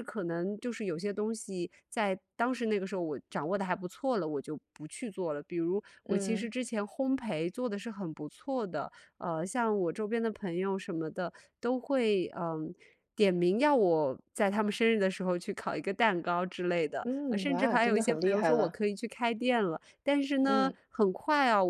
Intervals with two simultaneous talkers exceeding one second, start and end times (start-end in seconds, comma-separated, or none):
17.0-18.8